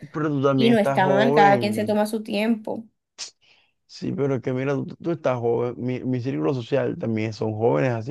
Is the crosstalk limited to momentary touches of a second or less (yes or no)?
no